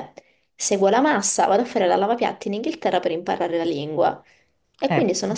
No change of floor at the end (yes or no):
yes